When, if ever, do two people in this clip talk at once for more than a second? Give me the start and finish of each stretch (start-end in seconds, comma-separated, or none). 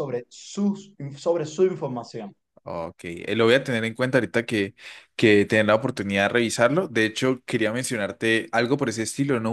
none